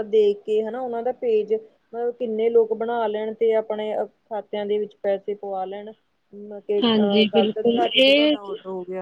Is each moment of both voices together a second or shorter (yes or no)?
no